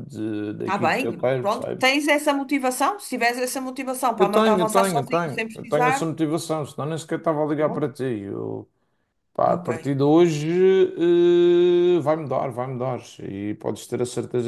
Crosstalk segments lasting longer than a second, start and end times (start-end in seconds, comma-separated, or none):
0.7-2.0, 4.2-6.1